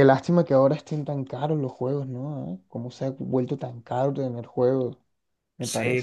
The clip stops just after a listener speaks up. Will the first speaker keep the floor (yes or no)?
no